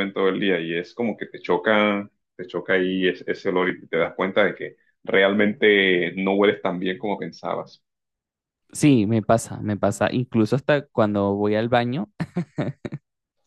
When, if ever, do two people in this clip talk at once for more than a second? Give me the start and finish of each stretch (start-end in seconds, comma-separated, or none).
none